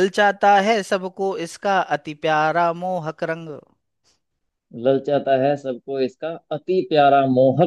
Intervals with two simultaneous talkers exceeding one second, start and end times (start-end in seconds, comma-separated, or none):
none